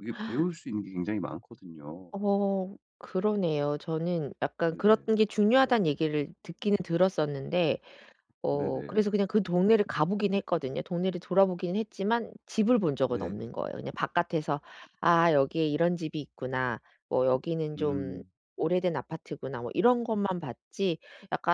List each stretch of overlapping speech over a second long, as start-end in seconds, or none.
none